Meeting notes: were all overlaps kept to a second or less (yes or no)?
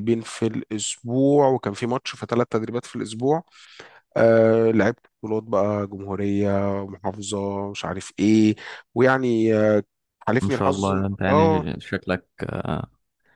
no